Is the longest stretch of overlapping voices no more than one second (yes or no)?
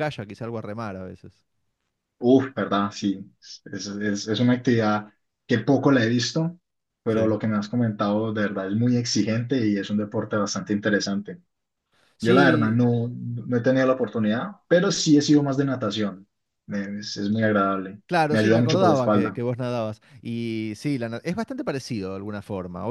no